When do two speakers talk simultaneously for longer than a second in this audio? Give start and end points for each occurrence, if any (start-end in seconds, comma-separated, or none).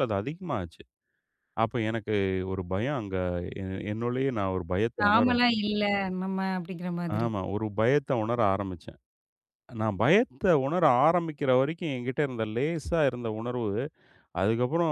none